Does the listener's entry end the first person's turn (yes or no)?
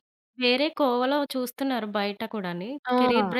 no